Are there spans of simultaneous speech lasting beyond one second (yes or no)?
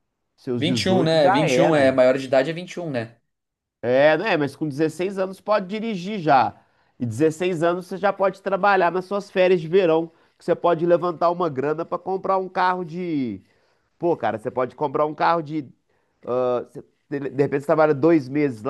yes